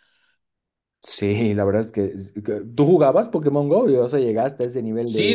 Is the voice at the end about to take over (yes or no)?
yes